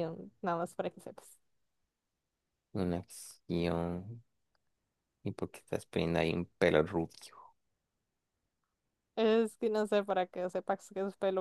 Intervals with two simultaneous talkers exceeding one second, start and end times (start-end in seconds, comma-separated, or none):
none